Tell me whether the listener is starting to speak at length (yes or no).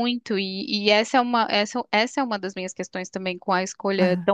no